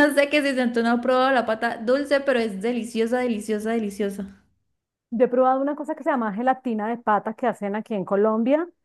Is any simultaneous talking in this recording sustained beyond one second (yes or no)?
no